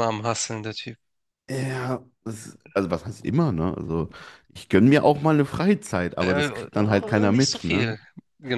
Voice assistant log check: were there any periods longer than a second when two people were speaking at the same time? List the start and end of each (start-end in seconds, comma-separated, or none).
6.2-8.0